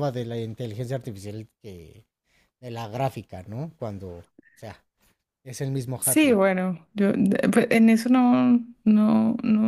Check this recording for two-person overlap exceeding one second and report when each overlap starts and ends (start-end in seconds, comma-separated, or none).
none